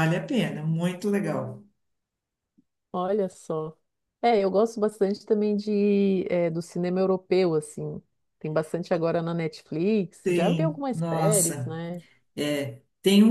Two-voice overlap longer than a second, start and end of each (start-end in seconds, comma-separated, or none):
10.2-11.8